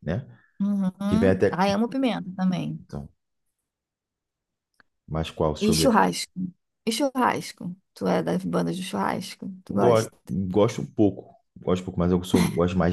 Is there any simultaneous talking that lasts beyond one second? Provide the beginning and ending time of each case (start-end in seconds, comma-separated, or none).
none